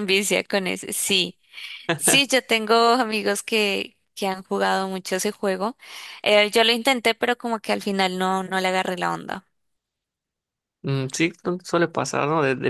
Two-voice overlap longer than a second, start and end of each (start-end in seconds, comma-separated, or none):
none